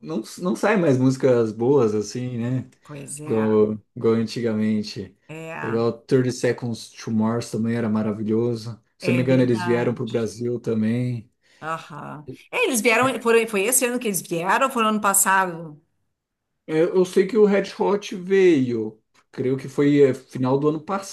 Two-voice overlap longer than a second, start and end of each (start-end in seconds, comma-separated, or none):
9.0-10.3